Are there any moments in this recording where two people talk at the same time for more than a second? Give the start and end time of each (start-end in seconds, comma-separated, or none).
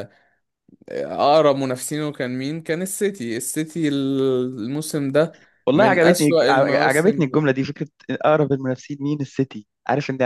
5.7-7.4